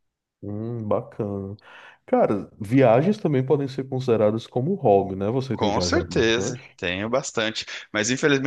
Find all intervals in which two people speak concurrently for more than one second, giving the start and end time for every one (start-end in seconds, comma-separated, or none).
5.5-6.8